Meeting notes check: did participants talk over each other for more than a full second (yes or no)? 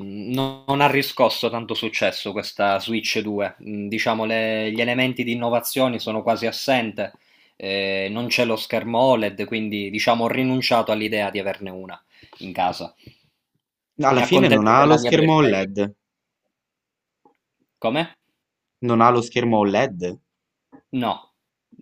yes